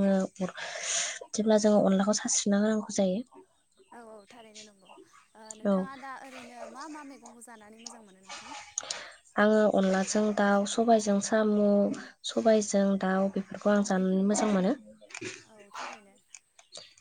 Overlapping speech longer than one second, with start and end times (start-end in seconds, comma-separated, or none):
none